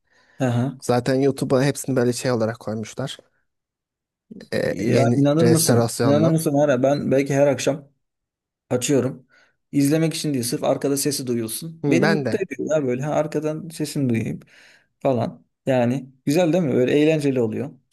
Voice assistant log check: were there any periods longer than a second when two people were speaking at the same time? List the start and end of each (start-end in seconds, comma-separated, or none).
4.7-6.4